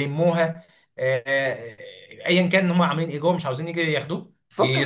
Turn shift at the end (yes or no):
yes